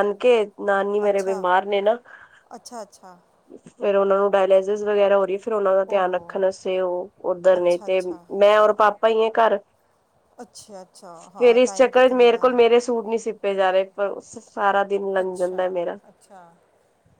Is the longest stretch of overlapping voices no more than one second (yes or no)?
no